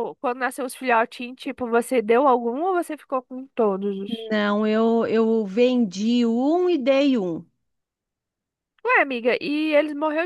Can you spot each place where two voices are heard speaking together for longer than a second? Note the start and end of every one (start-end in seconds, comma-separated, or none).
none